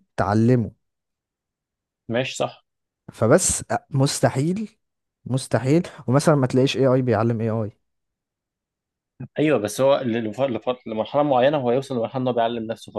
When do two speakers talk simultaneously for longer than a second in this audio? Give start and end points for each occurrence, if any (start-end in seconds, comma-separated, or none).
none